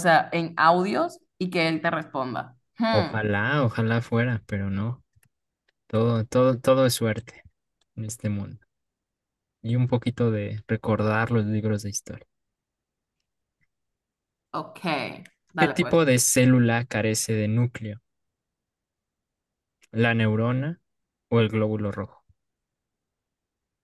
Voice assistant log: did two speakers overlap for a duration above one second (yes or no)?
no